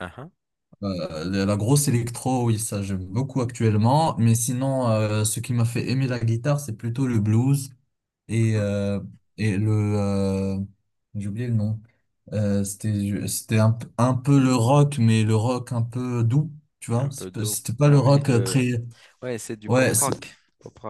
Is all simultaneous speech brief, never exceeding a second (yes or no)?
no